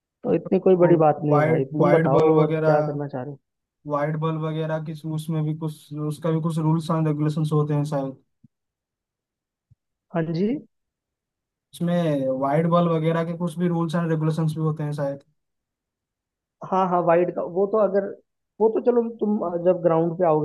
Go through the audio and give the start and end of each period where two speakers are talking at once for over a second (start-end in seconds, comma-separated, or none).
0.7-3.0